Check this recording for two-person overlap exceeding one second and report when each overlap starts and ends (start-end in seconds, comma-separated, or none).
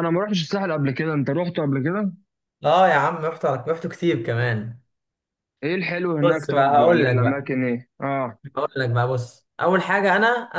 6.2-7.5